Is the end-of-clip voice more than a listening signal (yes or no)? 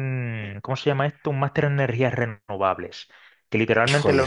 no